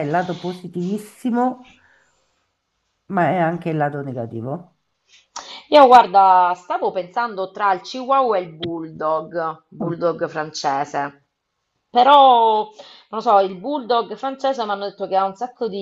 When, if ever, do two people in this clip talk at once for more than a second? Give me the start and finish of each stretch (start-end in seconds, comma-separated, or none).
none